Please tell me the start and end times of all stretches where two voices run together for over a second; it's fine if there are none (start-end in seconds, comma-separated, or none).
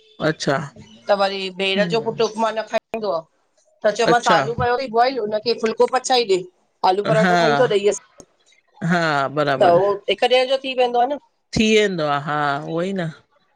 none